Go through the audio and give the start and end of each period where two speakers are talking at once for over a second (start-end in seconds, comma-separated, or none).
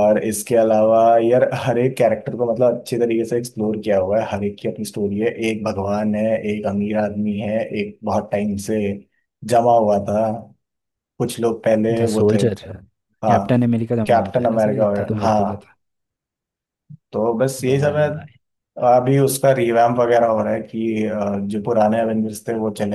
14.1-15.7